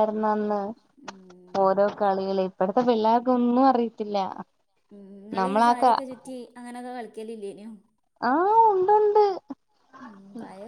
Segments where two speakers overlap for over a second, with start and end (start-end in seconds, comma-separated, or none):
none